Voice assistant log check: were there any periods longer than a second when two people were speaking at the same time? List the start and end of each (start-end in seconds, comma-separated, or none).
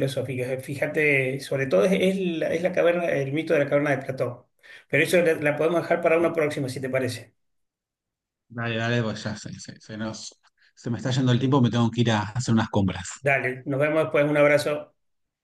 none